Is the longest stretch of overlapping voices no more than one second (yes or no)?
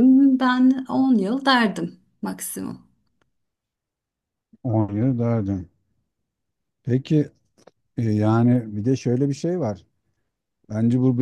yes